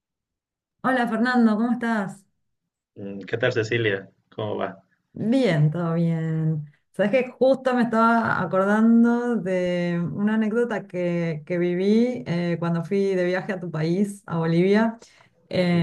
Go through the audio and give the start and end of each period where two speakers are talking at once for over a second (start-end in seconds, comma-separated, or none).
none